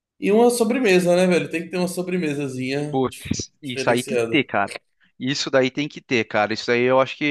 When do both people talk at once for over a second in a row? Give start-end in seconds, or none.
2.9-4.4